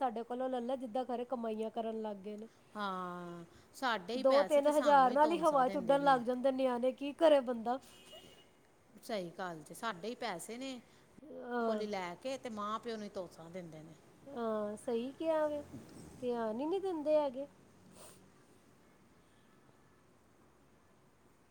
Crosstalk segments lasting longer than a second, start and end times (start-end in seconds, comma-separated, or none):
4.2-6.2